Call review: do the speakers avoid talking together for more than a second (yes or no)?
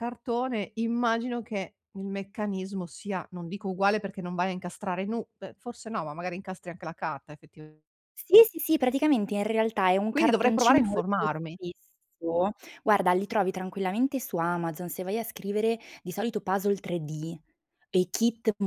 no